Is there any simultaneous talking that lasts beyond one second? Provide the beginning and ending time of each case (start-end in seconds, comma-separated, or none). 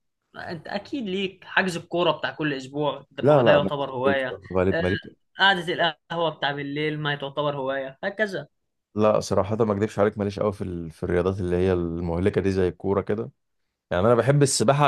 3.2-4.8